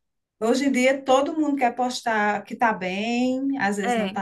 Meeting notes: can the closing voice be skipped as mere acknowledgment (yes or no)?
yes